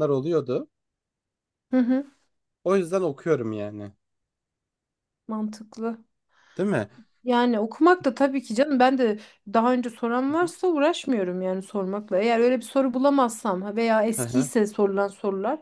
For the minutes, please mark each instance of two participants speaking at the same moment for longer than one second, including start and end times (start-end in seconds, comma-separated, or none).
none